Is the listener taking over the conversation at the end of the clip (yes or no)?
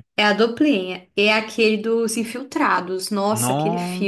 yes